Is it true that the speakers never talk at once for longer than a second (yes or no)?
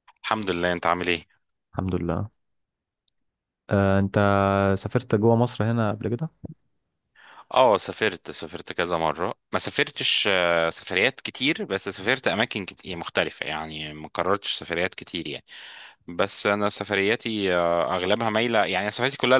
yes